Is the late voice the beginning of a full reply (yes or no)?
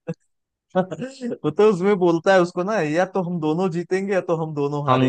yes